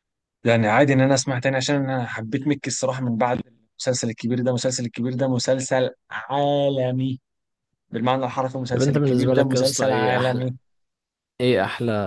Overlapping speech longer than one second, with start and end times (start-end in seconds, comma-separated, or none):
8.7-10.5